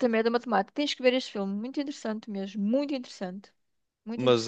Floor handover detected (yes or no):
yes